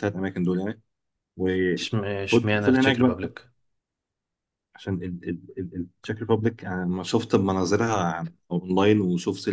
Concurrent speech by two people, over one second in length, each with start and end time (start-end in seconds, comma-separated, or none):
1.8-3.3